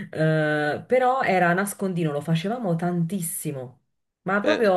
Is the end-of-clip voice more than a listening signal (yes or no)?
no